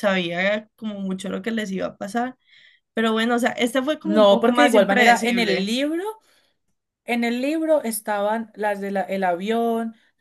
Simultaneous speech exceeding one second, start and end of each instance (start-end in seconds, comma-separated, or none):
4.0-5.7